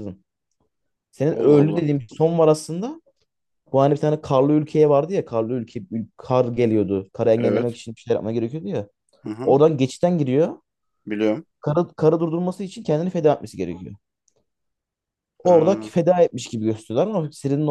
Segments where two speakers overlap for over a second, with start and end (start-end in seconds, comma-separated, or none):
none